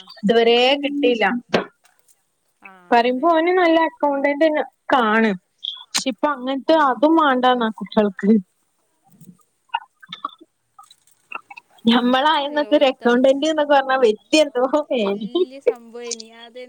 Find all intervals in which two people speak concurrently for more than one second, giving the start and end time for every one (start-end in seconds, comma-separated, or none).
12.2-13.5